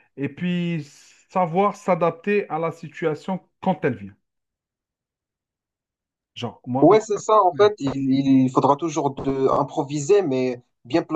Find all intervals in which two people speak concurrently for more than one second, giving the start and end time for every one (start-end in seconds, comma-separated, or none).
none